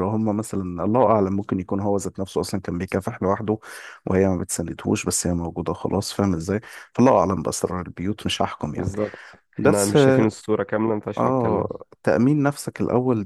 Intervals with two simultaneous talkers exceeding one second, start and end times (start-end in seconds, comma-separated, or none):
none